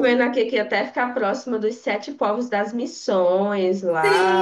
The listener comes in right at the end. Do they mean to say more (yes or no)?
yes